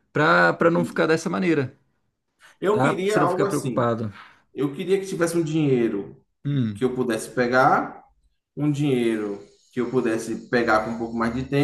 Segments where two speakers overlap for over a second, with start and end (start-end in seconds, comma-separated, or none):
2.7-4.0